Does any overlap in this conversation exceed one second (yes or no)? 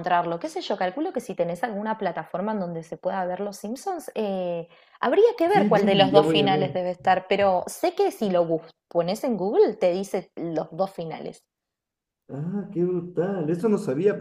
yes